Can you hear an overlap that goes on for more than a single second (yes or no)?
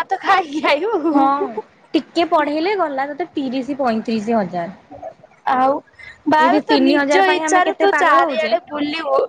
yes